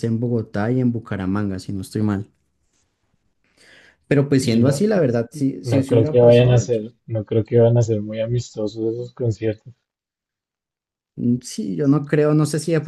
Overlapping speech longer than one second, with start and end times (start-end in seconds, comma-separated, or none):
5.6-6.8